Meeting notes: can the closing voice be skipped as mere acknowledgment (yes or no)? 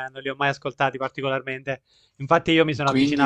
yes